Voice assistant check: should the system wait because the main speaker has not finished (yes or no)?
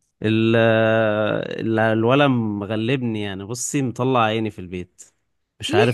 no